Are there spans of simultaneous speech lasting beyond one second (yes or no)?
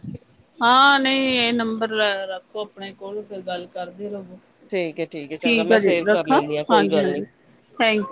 yes